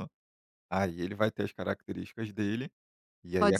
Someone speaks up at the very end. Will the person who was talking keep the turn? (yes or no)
no